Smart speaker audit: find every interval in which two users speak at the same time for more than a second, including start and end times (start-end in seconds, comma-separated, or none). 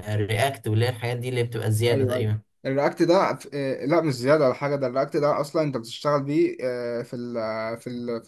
none